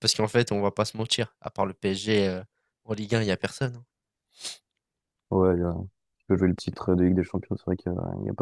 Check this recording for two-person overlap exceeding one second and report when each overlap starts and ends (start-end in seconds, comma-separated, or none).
none